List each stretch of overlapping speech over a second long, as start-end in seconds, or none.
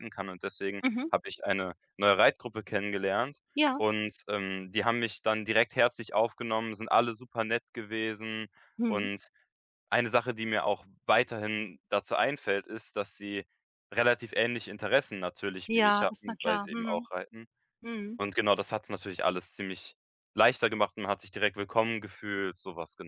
15.7-17.1